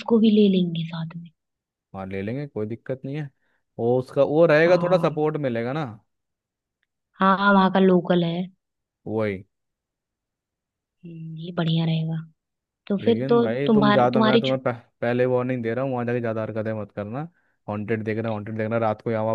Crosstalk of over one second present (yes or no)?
yes